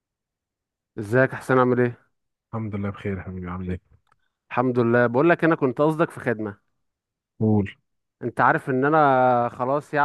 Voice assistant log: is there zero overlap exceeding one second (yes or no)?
yes